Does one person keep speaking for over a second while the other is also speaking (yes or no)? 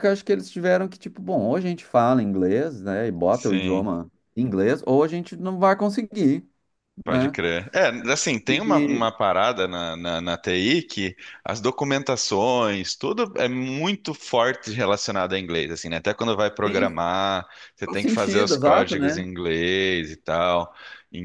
yes